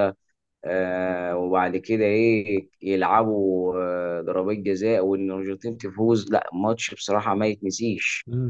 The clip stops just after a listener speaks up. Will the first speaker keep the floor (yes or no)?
no